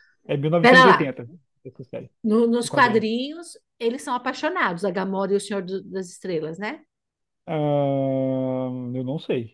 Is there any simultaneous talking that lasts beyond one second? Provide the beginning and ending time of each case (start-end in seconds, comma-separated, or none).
none